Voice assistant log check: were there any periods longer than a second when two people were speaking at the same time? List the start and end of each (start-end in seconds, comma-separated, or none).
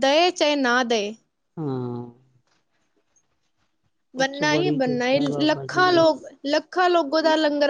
4.2-6.0